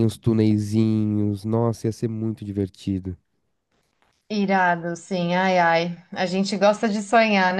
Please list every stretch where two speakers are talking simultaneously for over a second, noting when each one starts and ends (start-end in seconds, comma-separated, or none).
none